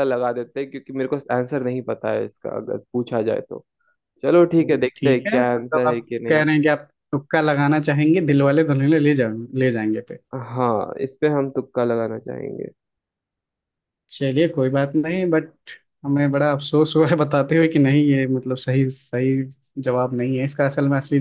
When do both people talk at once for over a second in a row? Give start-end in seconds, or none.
4.4-6.4